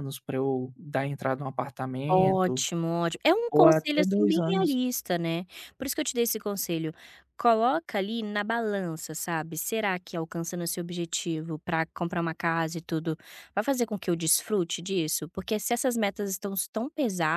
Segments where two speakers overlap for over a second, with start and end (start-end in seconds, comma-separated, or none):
3.5-4.8